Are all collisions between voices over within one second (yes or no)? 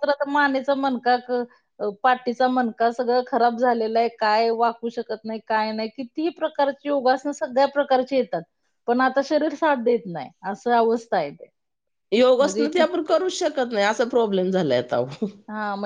yes